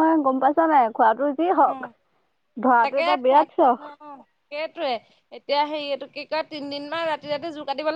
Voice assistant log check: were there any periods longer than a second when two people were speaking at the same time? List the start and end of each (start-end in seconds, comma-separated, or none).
none